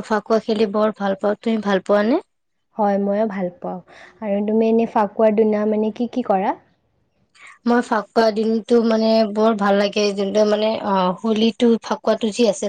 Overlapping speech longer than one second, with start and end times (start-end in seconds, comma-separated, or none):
none